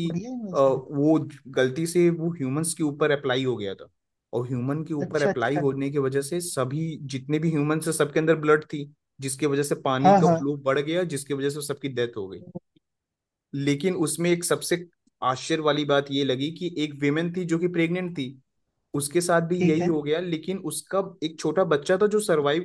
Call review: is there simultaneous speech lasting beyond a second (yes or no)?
no